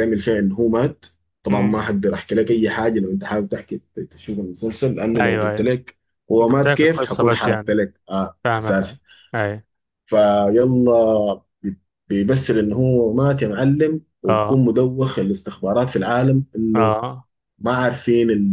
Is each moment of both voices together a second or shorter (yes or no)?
no